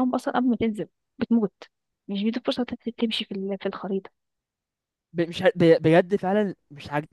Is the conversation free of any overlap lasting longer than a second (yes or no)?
yes